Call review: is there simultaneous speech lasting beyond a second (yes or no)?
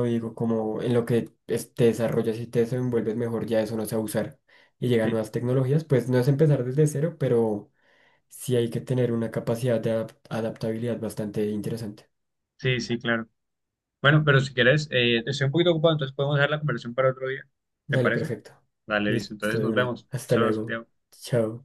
yes